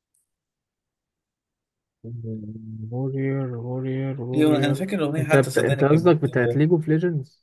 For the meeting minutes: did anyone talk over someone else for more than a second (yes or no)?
yes